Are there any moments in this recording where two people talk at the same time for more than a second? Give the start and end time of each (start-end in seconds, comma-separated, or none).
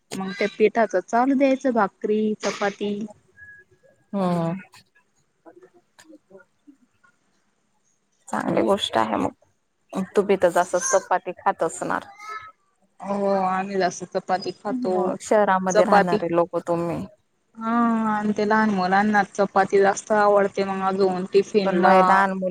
none